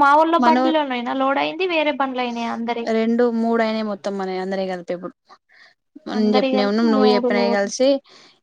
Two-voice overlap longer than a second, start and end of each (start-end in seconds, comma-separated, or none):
6.2-7.8